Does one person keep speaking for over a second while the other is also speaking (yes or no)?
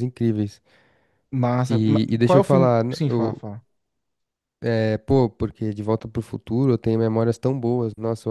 yes